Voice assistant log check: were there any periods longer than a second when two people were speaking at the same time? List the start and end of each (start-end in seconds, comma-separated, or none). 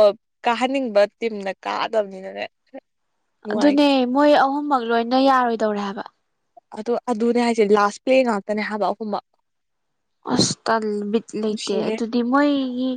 none